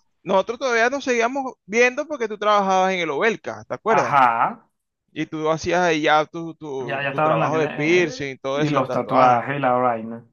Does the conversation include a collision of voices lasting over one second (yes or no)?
yes